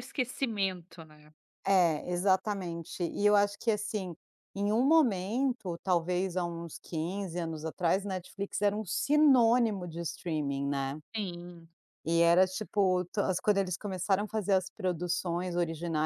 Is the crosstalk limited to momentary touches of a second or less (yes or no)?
yes